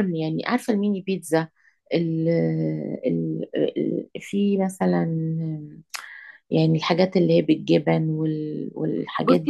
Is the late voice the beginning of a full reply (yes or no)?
yes